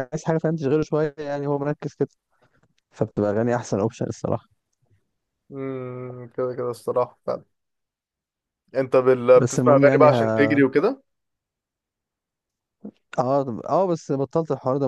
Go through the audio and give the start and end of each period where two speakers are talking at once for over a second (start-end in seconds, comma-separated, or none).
9.3-10.6